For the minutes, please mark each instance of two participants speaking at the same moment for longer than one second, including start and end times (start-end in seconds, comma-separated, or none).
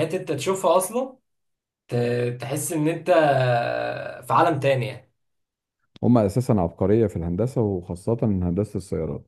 none